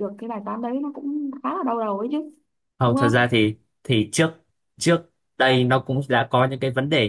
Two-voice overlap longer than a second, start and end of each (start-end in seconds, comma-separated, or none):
none